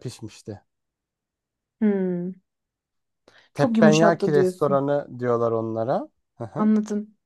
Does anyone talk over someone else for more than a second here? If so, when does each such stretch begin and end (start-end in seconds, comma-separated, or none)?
3.5-4.8